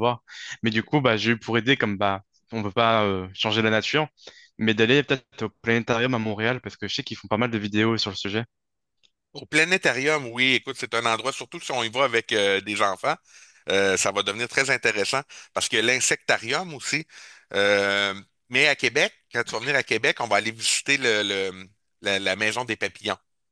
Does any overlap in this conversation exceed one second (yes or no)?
no